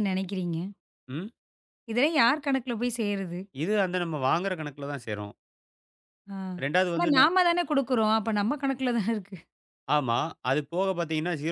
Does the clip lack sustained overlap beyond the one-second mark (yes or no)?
yes